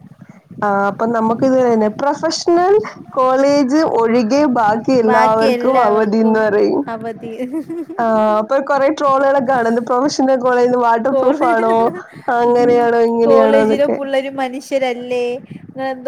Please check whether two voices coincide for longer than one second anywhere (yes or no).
yes